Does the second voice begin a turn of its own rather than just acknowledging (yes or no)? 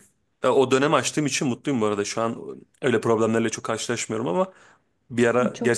no